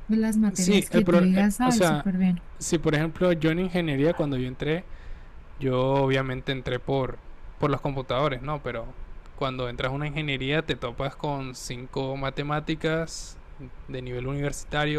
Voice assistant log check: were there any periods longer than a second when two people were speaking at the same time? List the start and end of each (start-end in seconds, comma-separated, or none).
0.5-2.1